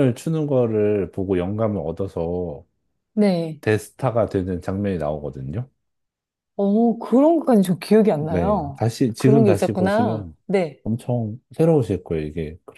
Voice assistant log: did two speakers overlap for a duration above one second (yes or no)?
yes